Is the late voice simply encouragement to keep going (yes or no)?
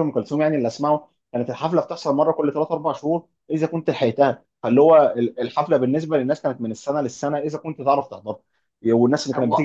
yes